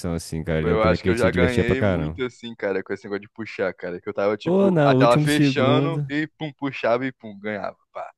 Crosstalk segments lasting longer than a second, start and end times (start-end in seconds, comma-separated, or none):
0.6-2.2, 4.4-6.1